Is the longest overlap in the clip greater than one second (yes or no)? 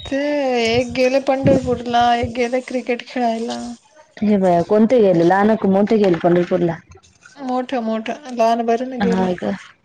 no